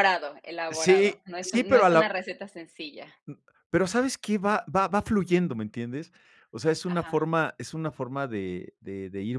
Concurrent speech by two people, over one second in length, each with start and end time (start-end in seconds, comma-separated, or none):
0.7-2.1